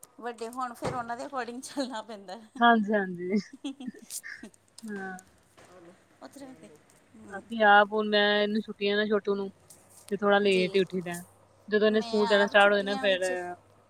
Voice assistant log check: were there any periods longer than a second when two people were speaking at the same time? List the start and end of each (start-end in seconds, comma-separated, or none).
11.9-13.2